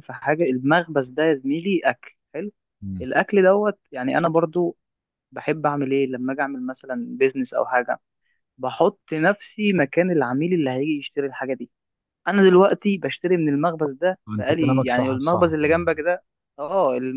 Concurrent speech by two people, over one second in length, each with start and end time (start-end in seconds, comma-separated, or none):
14.3-16.0